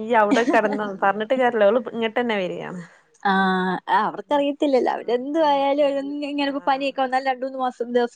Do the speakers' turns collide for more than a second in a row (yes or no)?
yes